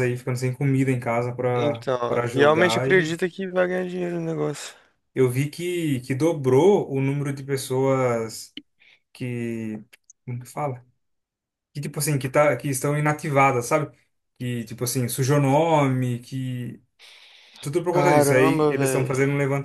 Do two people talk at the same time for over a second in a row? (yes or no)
yes